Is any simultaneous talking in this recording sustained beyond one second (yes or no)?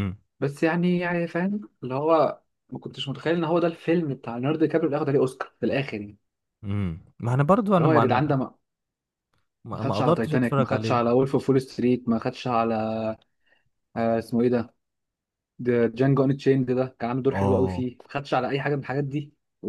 yes